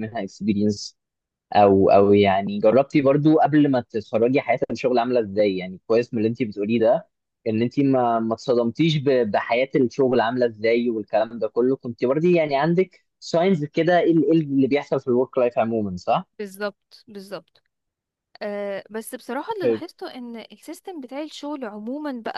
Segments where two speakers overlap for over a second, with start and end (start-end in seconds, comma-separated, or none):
none